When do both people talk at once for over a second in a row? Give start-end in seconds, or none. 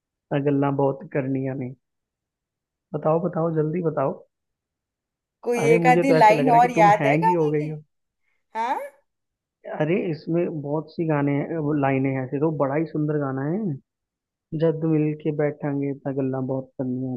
5.6-7.8